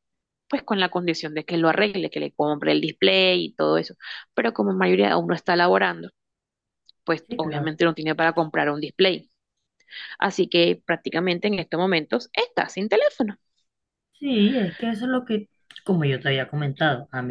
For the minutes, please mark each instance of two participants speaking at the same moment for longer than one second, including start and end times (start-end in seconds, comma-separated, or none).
none